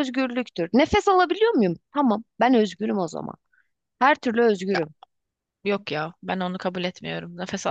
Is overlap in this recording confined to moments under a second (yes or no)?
yes